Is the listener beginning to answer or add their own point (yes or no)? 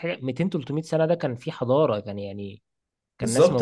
yes